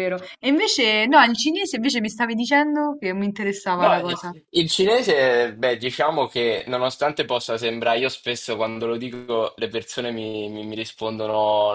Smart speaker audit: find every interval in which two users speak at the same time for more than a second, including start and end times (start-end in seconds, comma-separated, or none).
none